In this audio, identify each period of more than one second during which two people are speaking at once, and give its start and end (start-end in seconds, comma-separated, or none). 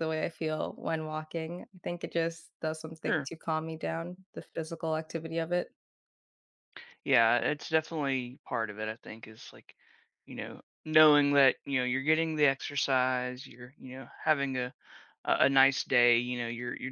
none